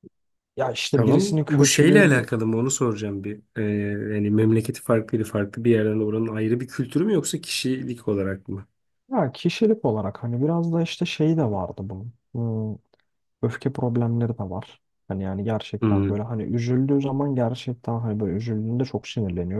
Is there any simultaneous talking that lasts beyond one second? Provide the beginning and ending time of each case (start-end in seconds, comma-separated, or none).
0.9-2.3